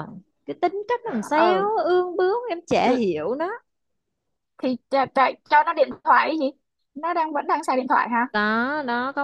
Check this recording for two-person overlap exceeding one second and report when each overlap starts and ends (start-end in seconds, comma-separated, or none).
none